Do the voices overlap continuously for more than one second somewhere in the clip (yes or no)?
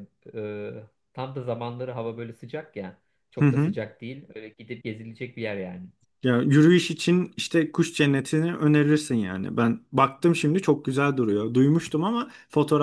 no